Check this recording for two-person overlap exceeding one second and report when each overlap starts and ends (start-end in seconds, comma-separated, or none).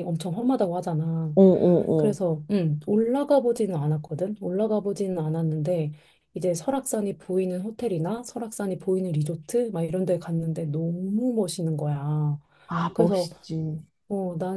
none